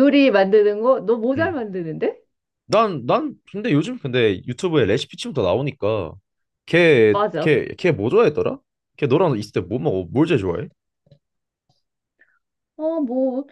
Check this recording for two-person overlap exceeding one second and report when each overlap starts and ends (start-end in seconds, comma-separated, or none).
none